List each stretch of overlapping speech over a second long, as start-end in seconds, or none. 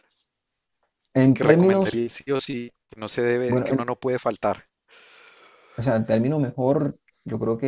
none